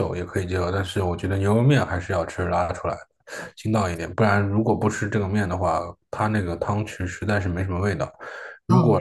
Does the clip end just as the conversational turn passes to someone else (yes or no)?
no